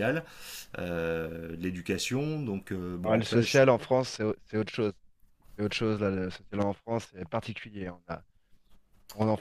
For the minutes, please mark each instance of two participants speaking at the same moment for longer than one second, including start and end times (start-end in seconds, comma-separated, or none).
none